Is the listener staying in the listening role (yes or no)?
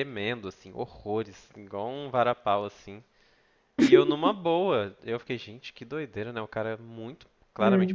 yes